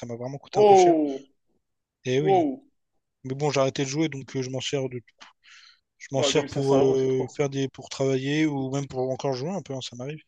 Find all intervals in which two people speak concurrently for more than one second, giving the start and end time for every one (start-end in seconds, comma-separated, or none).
6.1-7.4